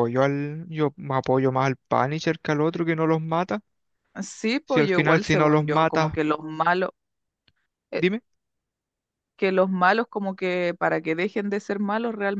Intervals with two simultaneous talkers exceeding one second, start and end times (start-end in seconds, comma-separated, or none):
4.6-6.2